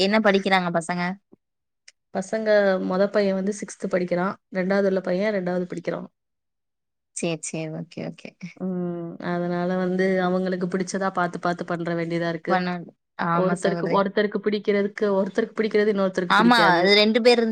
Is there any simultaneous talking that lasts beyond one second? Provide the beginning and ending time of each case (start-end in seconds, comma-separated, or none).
none